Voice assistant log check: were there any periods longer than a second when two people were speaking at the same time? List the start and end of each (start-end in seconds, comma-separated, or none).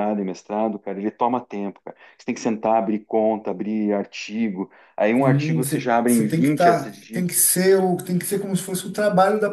5.2-7.3